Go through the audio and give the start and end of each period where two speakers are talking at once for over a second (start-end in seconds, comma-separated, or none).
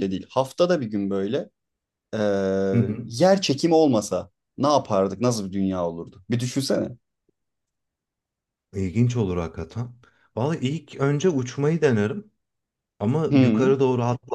none